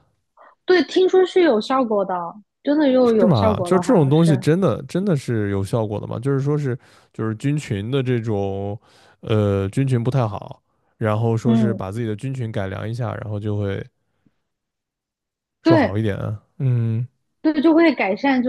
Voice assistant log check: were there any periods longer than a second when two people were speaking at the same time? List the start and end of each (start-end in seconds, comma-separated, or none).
3.0-4.4